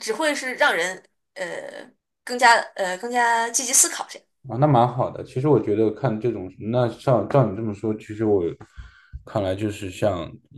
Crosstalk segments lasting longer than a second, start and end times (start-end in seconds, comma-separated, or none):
none